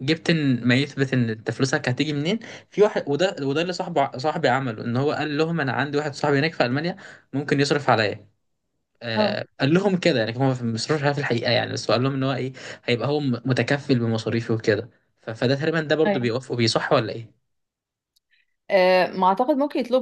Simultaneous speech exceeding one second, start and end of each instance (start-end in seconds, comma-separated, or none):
none